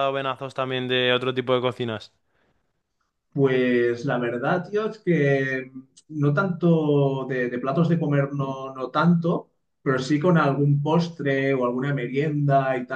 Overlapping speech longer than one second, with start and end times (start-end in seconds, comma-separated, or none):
none